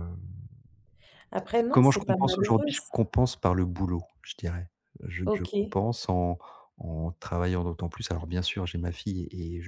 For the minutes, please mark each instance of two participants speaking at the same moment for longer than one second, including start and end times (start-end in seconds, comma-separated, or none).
1.7-2.9